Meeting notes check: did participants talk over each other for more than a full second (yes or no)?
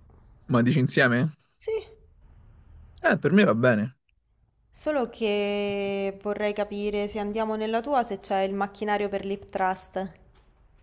no